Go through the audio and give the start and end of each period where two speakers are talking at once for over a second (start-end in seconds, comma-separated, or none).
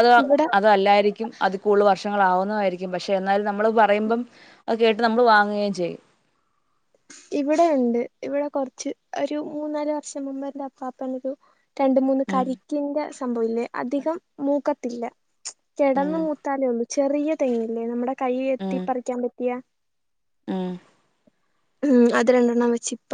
none